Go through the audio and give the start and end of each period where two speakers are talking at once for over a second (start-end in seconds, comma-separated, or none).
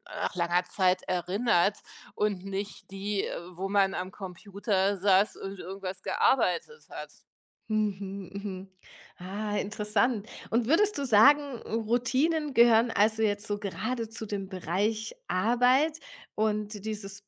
none